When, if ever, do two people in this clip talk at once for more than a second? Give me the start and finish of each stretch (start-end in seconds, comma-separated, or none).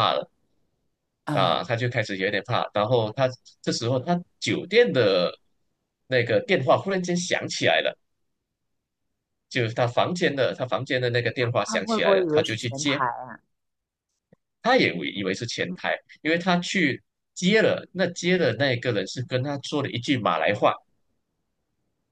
11.7-13.0